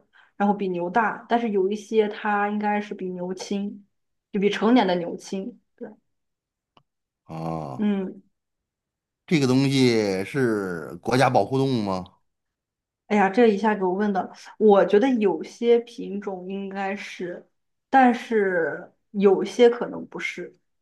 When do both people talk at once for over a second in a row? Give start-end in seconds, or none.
none